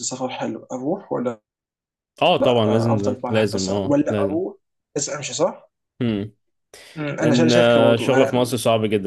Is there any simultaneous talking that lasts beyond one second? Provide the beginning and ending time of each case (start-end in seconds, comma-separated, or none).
2.7-4.4, 7.2-8.4